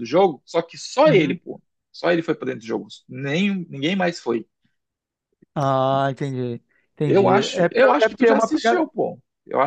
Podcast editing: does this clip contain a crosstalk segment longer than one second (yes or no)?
yes